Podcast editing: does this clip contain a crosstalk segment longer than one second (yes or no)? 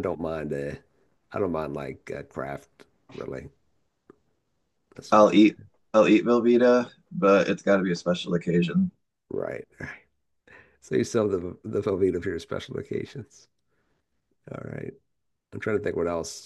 no